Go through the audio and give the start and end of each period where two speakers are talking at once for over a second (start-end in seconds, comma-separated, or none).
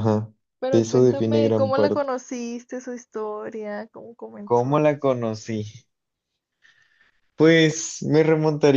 0.7-2.1